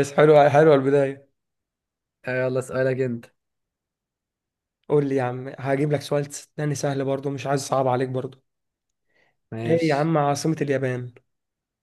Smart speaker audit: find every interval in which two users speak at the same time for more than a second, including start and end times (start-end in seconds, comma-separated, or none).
none